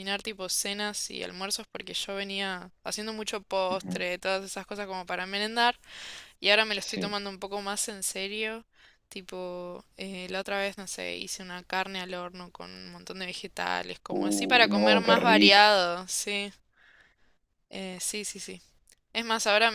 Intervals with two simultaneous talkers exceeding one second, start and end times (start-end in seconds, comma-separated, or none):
14.1-15.7